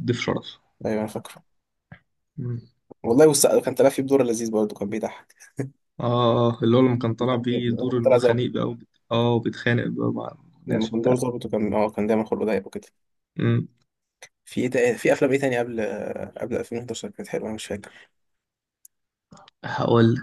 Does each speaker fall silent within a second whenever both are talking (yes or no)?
no